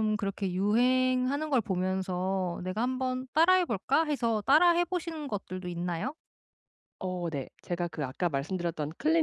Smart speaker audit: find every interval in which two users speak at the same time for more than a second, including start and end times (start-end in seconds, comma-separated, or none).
none